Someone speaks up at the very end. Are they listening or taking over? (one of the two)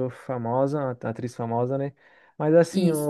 listening